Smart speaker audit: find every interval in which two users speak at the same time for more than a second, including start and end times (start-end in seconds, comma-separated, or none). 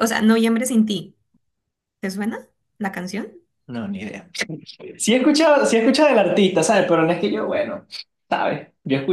none